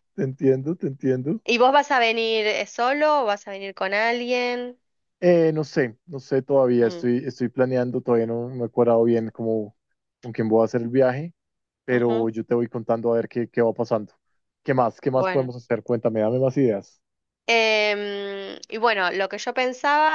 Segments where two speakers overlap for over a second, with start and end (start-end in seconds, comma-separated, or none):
none